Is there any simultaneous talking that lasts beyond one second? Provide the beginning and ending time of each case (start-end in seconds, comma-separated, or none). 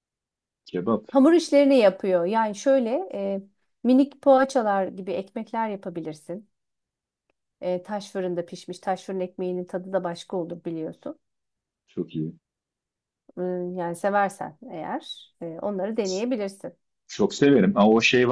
none